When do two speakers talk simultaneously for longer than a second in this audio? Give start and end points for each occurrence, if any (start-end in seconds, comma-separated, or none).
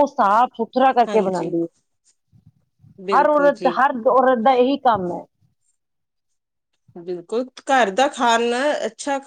none